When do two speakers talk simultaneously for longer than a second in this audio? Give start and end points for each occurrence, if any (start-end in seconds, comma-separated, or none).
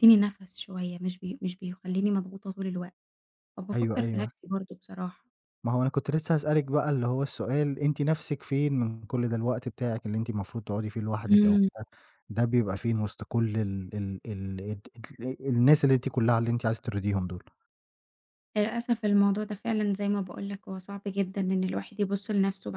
none